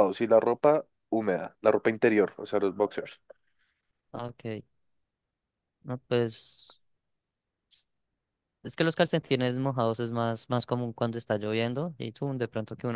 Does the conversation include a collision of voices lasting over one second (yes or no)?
no